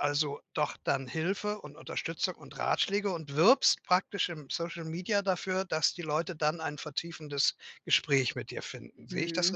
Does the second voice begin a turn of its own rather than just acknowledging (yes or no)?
yes